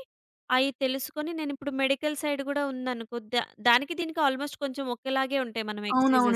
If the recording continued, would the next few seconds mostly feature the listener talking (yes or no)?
yes